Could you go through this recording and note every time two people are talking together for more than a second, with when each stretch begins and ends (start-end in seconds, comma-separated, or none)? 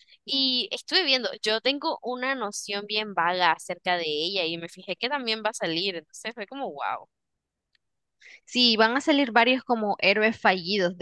none